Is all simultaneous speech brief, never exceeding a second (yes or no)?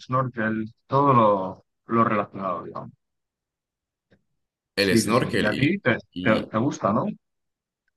no